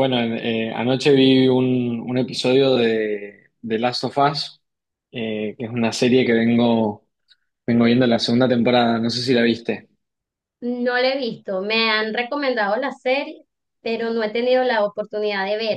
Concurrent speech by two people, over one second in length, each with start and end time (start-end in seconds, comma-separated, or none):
none